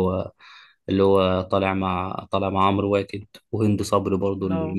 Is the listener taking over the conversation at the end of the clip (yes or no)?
no